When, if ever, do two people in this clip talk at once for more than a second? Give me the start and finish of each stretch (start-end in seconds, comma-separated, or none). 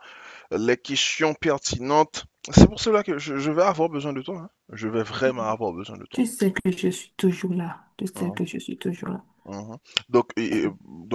none